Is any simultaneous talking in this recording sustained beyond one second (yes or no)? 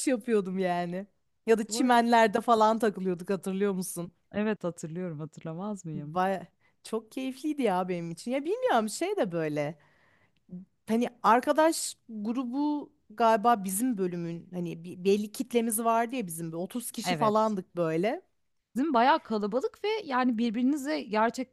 no